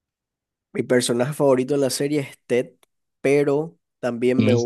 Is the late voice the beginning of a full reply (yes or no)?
no